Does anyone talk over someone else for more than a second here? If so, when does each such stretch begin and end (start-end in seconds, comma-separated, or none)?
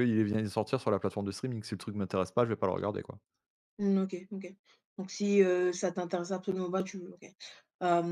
none